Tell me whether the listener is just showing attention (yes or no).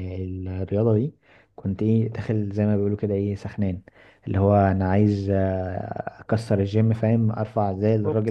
yes